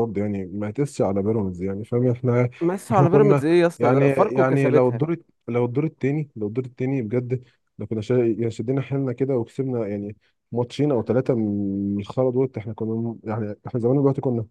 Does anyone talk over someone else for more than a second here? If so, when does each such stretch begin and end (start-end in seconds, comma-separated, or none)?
2.9-5.0